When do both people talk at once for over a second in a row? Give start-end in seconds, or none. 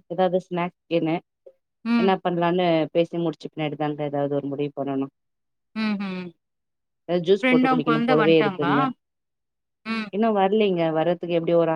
7.4-8.7